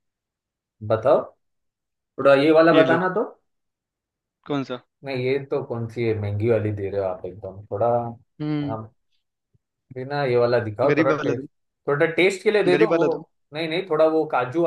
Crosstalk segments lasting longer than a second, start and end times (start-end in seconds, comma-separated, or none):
none